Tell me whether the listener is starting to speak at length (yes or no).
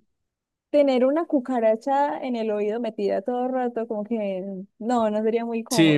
yes